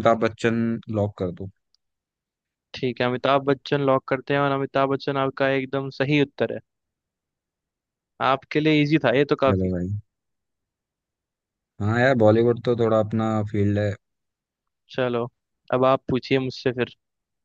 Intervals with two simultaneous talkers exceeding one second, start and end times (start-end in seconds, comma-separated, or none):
none